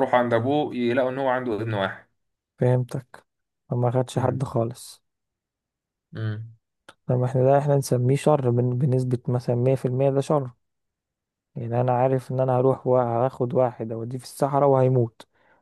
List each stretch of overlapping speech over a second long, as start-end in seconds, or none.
none